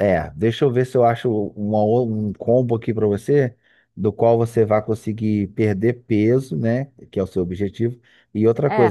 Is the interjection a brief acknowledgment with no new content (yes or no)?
yes